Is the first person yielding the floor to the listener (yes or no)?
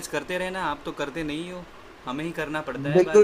yes